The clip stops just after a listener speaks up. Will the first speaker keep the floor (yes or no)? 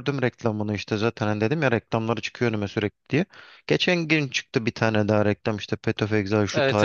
no